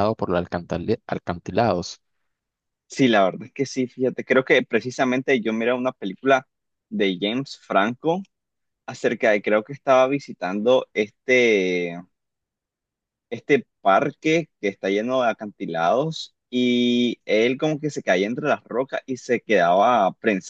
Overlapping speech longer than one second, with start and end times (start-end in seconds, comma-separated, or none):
none